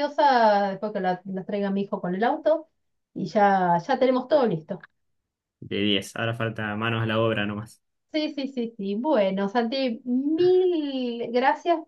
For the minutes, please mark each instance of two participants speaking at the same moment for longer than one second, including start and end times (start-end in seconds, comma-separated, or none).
none